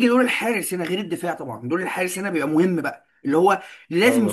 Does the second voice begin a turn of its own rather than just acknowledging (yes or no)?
no